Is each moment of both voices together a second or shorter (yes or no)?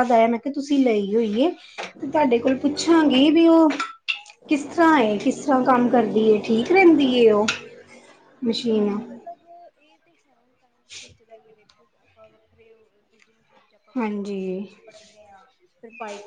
yes